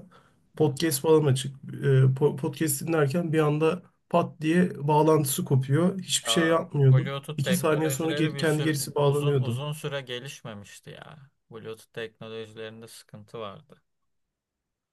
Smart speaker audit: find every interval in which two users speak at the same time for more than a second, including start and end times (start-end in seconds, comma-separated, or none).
6.3-9.6